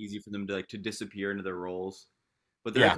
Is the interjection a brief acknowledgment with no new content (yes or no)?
no